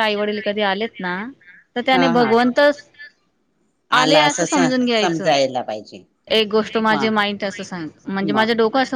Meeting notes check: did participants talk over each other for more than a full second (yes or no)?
no